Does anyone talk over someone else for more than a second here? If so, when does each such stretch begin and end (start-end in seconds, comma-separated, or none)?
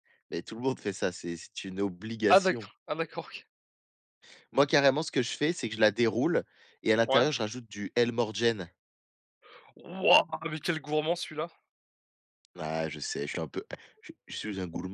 none